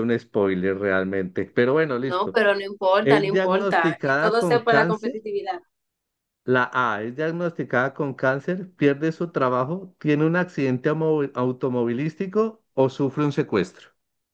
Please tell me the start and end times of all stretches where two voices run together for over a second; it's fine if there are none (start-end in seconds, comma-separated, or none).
3.0-5.1